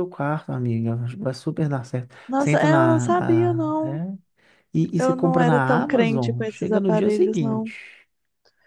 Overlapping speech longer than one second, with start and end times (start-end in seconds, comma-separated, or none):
2.3-4.0, 5.0-7.7